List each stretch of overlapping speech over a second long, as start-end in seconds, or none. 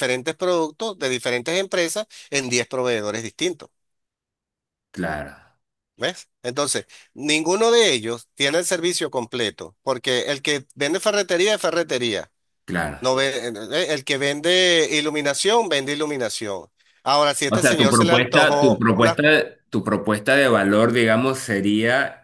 17.5-19.2